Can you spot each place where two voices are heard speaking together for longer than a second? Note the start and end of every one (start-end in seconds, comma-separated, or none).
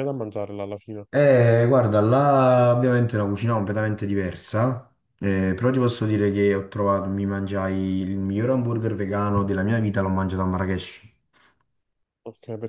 none